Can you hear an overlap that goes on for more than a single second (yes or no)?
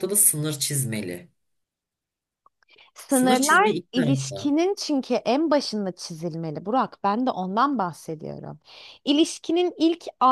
yes